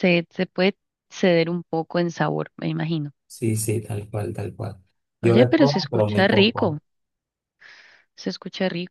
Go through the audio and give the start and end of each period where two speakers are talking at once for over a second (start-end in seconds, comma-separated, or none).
5.2-6.8